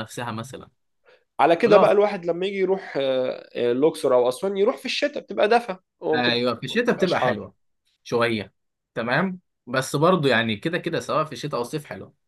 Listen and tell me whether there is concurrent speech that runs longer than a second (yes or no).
yes